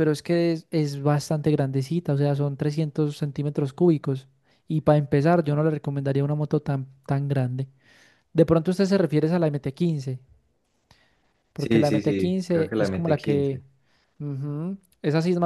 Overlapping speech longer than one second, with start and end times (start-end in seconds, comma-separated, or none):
11.6-13.6